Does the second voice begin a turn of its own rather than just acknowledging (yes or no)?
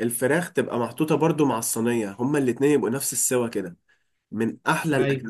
no